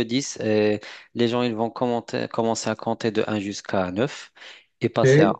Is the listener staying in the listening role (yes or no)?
yes